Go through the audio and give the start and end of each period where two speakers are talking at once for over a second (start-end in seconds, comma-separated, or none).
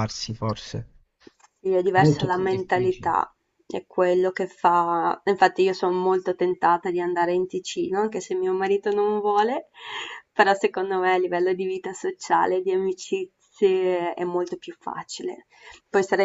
1.9-3.1